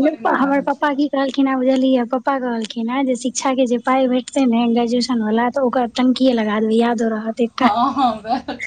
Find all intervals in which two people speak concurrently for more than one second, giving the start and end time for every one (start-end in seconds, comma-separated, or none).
none